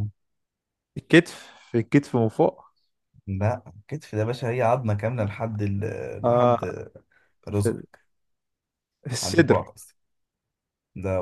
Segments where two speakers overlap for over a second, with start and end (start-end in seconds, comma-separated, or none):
none